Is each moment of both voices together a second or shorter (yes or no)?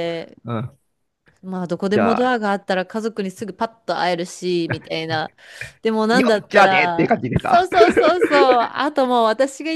no